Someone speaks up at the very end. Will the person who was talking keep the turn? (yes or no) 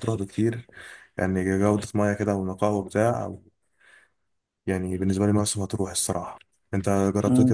yes